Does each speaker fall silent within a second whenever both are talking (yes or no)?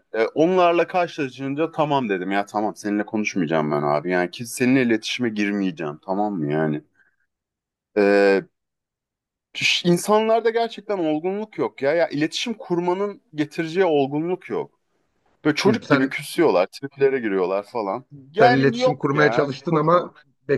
no